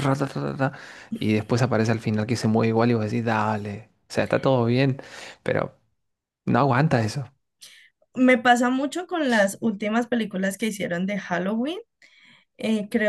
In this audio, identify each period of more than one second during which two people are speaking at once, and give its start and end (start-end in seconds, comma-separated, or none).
none